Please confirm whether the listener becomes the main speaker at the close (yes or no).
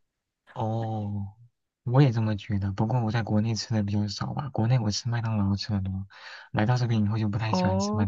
yes